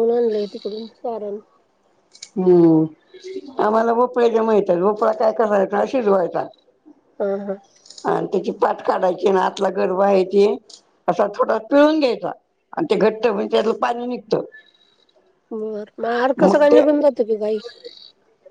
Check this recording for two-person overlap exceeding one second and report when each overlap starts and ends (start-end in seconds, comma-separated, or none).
none